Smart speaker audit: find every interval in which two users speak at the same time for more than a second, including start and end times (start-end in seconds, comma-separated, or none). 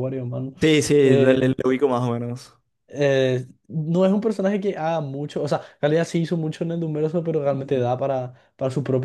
none